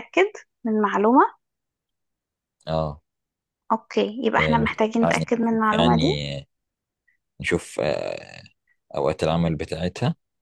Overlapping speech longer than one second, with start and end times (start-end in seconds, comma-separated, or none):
4.4-6.2